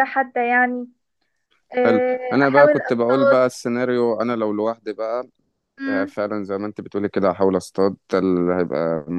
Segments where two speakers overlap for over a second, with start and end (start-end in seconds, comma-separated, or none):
1.8-3.5